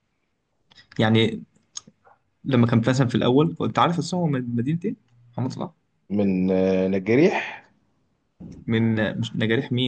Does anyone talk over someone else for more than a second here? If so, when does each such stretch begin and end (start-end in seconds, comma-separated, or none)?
none